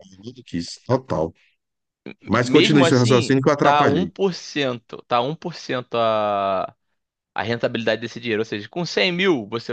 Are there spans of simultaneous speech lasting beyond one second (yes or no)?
yes